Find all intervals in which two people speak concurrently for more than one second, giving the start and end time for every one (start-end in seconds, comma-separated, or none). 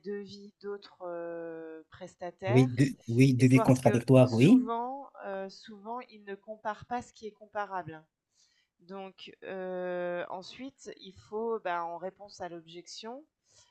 3.4-4.7